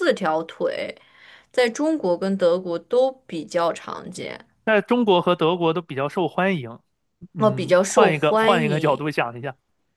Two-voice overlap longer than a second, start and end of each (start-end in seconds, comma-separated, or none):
7.4-9.0